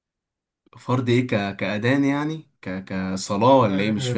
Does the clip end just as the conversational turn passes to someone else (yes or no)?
yes